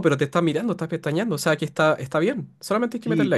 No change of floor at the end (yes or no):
no